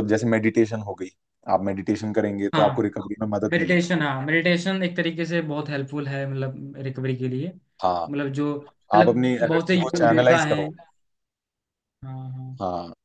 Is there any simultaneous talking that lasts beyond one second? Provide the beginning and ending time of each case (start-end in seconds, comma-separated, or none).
8.9-10.7